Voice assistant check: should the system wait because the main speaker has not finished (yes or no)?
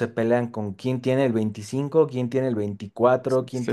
yes